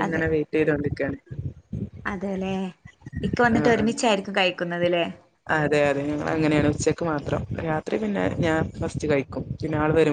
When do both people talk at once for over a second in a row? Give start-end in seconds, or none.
none